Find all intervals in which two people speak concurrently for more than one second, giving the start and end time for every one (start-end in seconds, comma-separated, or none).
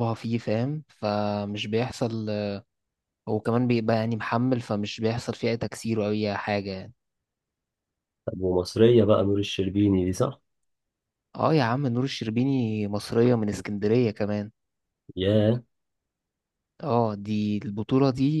none